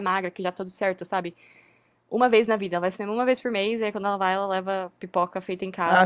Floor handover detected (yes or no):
yes